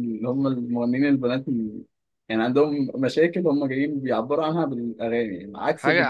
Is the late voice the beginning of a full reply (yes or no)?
yes